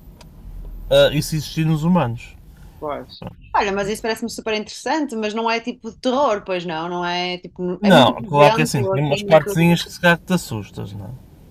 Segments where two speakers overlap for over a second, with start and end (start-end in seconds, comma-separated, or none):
7.8-9.6